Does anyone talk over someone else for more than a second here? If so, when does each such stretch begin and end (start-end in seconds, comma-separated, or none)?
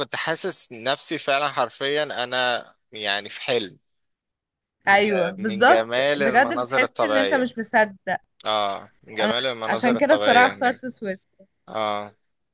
4.9-7.5, 9.2-10.9